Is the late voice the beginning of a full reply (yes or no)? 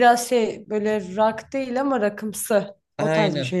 yes